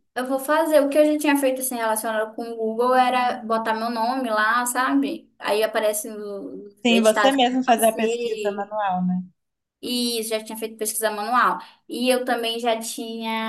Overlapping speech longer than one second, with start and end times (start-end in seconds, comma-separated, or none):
6.8-8.7